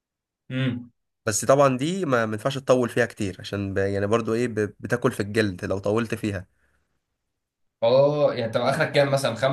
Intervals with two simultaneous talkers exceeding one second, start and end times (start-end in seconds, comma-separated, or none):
none